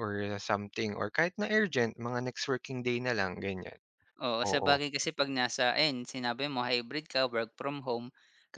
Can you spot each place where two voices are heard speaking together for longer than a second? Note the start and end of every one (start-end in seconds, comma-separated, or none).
none